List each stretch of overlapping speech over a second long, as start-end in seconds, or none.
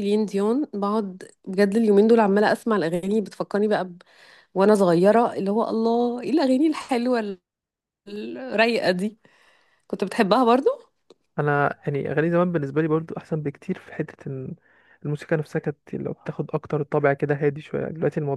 none